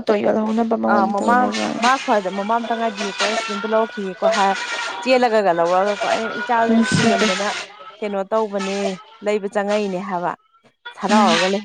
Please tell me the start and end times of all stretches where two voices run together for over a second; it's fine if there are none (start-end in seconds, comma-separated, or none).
none